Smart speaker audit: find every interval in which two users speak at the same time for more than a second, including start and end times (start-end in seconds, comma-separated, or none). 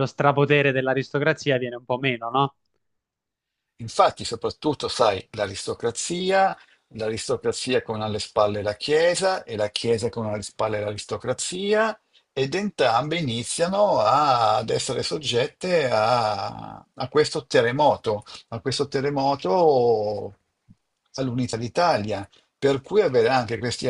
none